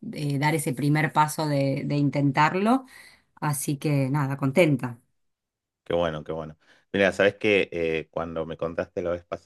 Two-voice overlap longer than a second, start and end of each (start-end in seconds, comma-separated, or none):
none